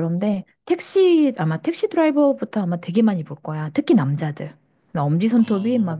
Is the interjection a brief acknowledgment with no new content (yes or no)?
yes